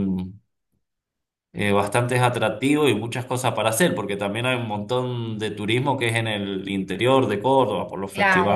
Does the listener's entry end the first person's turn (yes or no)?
yes